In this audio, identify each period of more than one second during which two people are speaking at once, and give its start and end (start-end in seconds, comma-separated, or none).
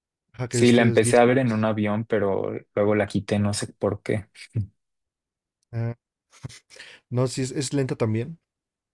0.5-1.7